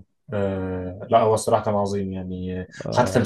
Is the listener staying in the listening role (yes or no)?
yes